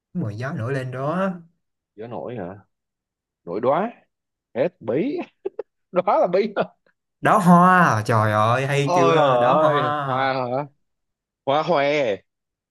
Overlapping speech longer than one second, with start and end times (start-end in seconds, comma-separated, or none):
8.8-10.3